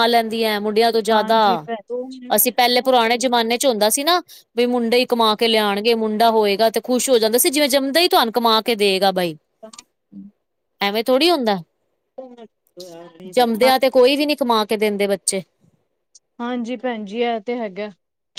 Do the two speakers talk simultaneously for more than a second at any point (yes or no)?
no